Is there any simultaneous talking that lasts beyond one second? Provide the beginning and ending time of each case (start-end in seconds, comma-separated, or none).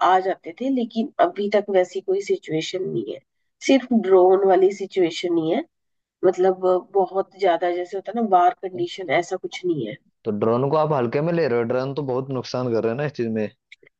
none